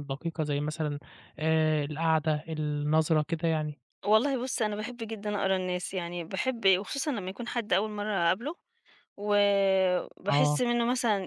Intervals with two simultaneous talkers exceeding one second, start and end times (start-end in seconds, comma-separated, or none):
none